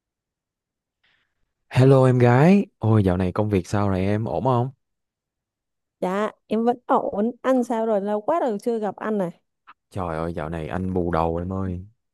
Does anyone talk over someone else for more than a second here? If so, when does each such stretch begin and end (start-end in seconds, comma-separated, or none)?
none